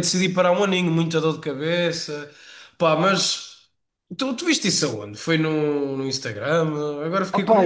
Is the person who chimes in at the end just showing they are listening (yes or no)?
no